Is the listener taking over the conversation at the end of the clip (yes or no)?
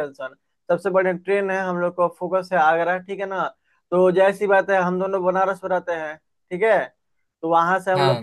no